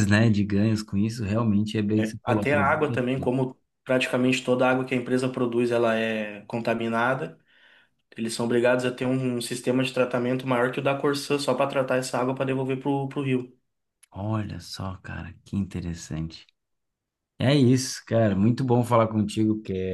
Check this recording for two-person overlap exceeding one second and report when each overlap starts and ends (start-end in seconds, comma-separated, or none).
2.0-3.4